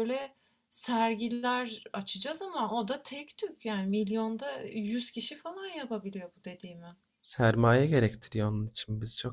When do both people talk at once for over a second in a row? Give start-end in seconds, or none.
none